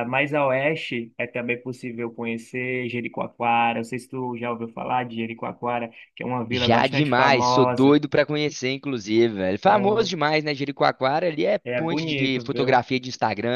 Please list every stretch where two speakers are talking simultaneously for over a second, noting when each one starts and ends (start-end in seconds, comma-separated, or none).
6.5-8.0, 11.6-12.9